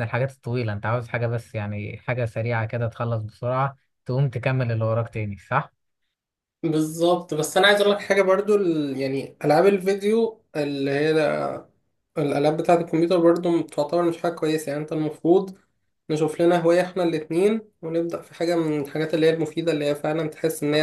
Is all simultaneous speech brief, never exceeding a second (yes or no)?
yes